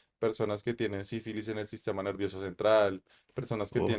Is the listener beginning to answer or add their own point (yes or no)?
no